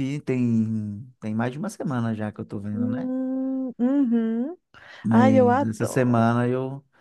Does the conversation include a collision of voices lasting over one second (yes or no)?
yes